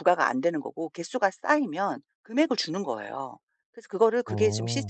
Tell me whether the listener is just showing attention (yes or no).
yes